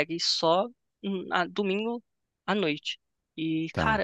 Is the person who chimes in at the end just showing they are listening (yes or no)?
yes